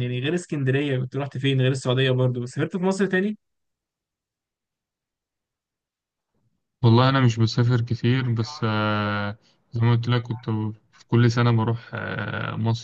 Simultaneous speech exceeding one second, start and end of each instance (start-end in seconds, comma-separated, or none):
none